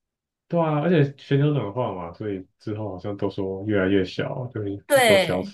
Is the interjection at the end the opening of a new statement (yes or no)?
yes